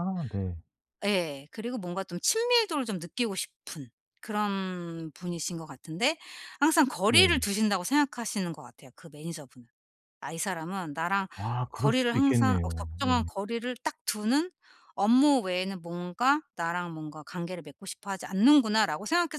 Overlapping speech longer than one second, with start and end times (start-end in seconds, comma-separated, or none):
11.7-13.2